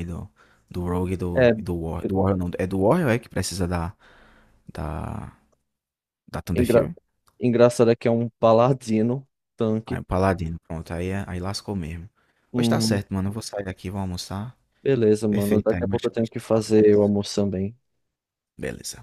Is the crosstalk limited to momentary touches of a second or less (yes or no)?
no